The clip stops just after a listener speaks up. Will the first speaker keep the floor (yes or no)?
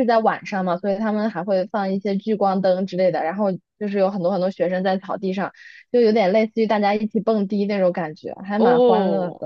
no